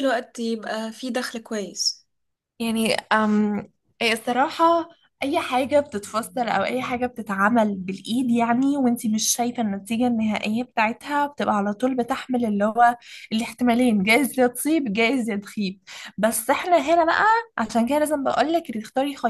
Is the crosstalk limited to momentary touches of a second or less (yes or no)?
yes